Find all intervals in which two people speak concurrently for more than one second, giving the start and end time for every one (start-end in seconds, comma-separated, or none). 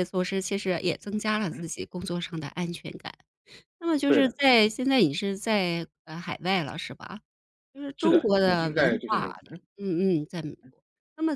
8.0-9.6